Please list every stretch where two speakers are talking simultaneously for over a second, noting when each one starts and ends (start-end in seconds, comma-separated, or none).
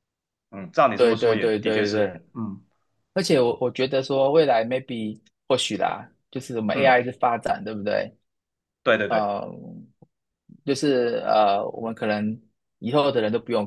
0.9-2.2